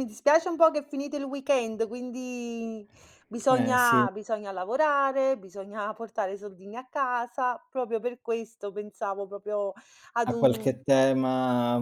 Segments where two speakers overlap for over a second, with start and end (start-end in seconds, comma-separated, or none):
none